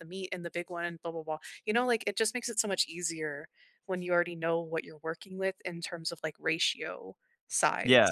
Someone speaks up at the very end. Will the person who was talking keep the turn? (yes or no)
no